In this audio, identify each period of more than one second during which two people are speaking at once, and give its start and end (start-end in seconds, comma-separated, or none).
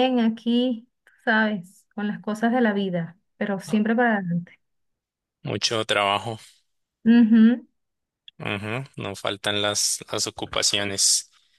none